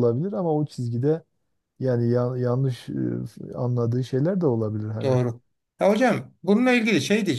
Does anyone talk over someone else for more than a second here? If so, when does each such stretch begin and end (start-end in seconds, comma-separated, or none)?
none